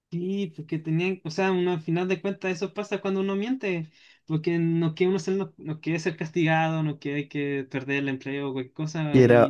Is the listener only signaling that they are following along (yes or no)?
no